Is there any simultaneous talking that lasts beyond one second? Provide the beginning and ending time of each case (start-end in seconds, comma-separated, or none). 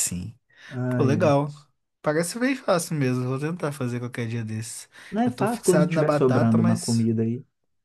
5.2-7.1